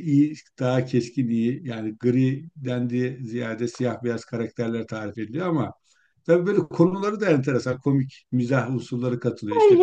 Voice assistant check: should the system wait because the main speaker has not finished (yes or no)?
no